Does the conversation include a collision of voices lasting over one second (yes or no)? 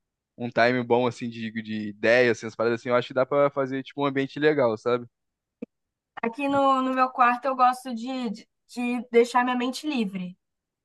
no